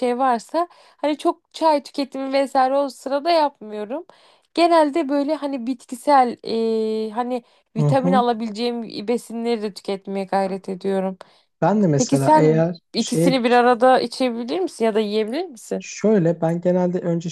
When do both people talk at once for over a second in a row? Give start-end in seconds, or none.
12.0-13.4